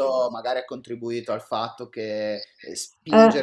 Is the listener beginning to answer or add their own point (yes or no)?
no